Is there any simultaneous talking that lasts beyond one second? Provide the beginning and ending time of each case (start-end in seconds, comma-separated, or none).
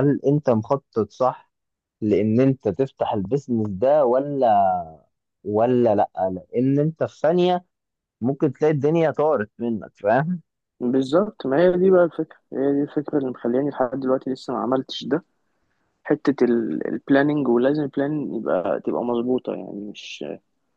none